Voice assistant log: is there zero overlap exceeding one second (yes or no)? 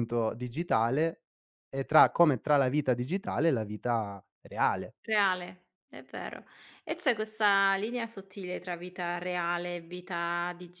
yes